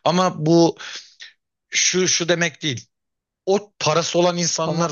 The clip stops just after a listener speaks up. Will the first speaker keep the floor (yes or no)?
yes